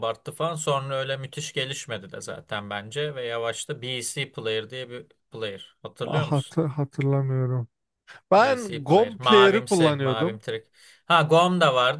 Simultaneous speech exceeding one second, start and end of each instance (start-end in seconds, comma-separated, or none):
8.4-10.4